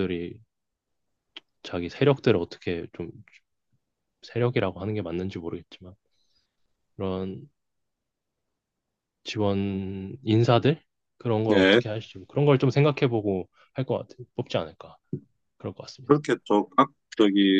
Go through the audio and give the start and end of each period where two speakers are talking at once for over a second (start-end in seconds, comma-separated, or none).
none